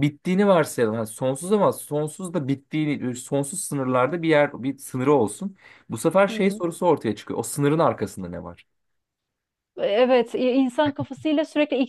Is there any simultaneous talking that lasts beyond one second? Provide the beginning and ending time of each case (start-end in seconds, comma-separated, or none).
none